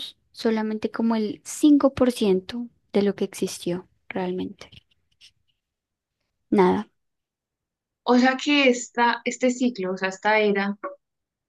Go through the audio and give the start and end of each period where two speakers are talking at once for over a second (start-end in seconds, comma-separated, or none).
none